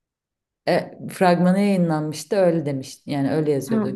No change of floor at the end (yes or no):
no